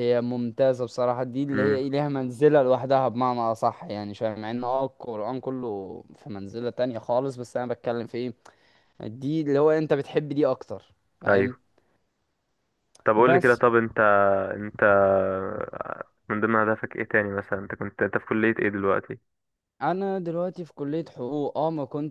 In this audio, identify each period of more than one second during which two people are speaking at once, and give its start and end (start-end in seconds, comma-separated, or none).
none